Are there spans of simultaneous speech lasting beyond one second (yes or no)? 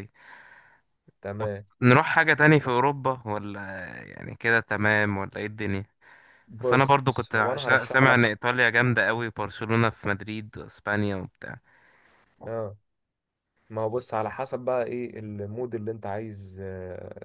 yes